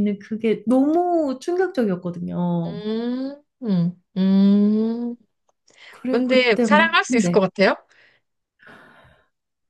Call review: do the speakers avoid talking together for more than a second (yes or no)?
no